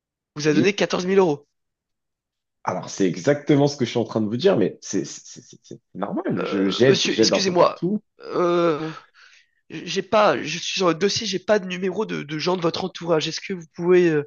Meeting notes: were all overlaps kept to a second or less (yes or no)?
no